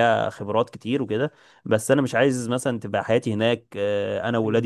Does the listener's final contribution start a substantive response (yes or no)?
no